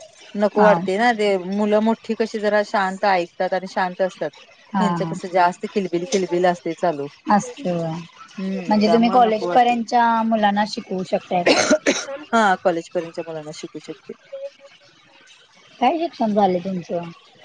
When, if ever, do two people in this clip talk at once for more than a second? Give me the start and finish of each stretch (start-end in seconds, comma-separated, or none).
8.4-9.8